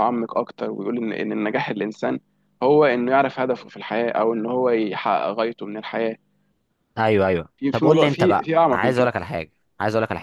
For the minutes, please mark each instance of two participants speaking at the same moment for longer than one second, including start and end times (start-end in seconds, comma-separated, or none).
7.6-9.1